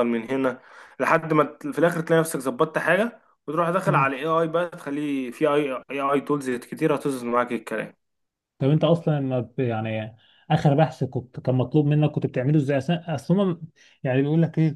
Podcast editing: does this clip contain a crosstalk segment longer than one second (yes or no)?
no